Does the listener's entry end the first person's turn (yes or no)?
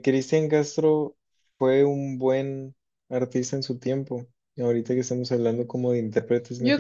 yes